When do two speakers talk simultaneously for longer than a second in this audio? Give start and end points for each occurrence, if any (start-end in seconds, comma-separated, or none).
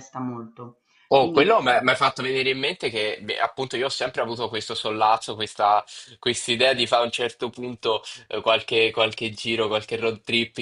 none